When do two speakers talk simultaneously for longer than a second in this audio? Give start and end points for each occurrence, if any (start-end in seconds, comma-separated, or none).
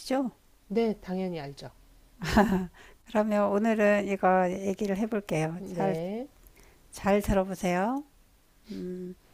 none